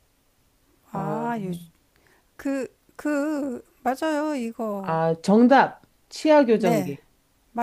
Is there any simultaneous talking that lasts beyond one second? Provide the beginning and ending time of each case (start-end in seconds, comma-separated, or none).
none